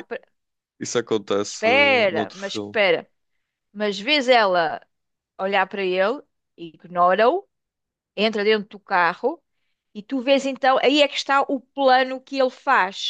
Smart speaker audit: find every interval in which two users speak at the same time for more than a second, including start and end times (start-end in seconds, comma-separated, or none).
1.4-2.8